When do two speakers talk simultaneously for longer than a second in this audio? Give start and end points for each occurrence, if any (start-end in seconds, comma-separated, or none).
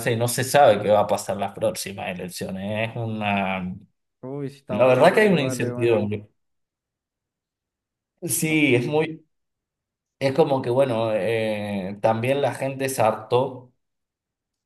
4.7-6.0